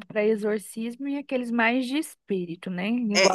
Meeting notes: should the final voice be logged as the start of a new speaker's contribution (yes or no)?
yes